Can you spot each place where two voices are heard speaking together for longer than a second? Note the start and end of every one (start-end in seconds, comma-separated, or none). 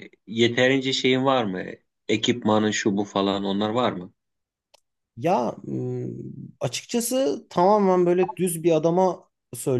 none